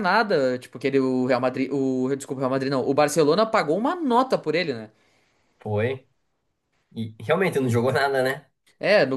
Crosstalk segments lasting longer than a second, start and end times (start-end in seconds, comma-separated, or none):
none